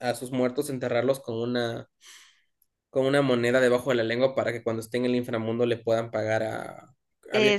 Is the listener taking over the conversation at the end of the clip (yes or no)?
yes